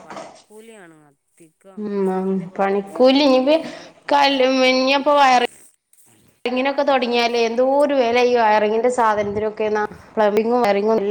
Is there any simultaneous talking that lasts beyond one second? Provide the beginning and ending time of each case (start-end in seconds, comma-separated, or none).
1.8-3.6